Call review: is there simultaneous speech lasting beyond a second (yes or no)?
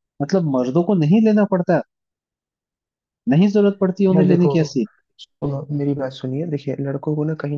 no